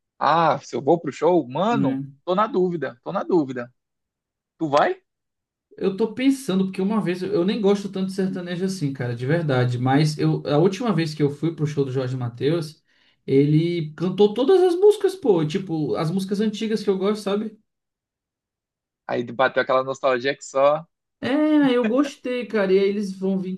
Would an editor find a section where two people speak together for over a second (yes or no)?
no